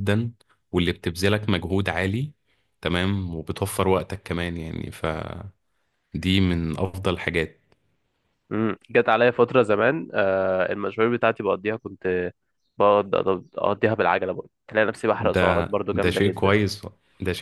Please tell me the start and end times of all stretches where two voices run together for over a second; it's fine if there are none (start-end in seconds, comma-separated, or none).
15.2-16.6